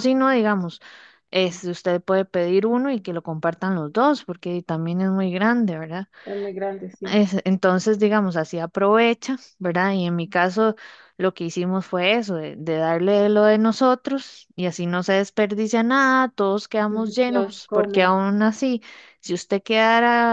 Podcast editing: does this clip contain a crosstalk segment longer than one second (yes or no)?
yes